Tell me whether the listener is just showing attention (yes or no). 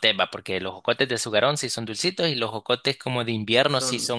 no